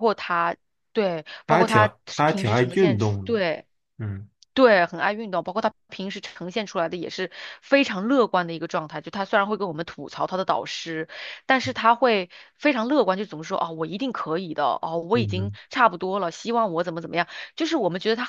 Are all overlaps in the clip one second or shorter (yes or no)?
no